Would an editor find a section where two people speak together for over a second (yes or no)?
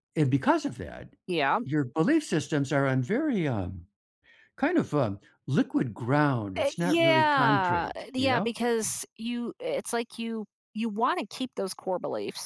yes